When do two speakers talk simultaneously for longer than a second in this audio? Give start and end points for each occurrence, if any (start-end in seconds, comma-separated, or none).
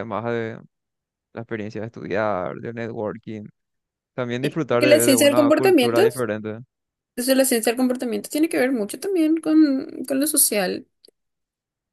4.7-6.0